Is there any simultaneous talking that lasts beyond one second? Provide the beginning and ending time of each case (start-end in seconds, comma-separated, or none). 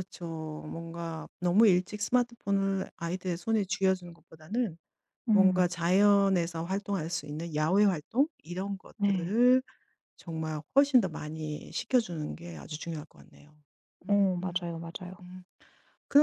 none